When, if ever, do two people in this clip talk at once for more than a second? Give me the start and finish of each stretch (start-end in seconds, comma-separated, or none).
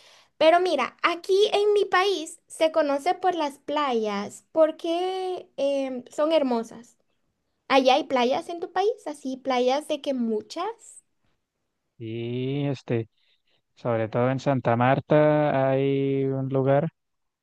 none